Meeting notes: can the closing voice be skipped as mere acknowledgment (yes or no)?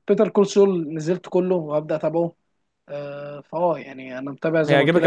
no